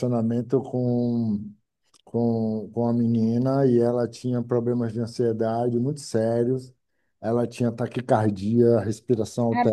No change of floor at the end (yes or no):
yes